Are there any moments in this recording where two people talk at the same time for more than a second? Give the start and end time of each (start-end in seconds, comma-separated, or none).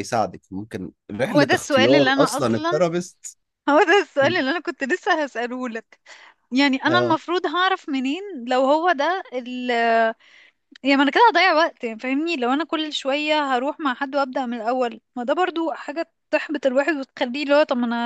1.3-2.9